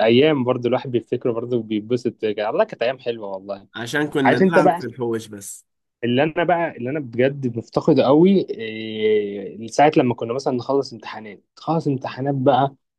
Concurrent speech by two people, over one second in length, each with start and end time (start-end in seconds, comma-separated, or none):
none